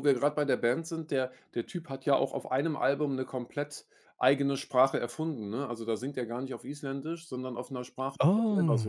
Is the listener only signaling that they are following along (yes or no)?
yes